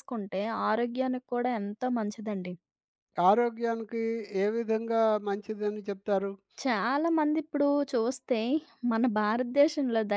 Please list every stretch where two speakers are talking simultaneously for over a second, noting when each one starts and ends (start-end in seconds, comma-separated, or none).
none